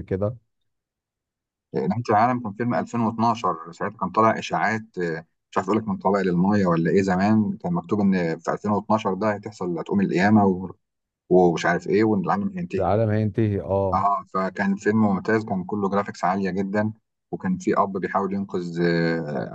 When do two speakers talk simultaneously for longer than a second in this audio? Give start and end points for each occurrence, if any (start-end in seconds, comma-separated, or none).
none